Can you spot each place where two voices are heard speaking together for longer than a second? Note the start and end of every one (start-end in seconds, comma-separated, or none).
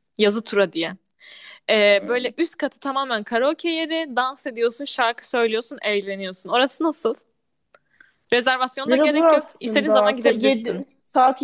8.9-10.8